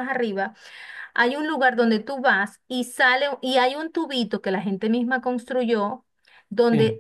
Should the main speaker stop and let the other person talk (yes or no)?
no